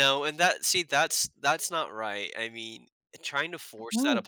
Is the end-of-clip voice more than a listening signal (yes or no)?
no